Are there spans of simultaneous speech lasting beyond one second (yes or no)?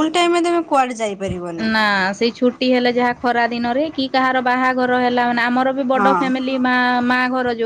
no